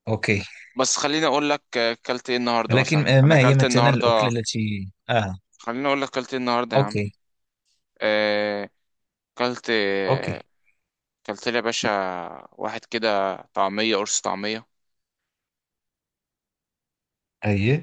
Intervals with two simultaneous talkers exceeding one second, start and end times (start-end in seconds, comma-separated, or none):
2.7-4.3